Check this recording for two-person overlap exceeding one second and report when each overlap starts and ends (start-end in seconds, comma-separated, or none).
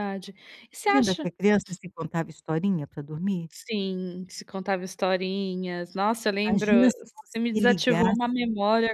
6.5-8.2